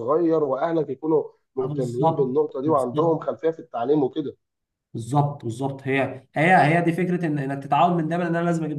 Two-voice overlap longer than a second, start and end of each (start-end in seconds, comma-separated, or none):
1.6-3.2